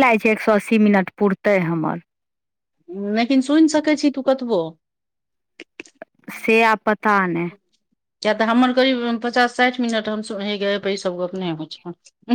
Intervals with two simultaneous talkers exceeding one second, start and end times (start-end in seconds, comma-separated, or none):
none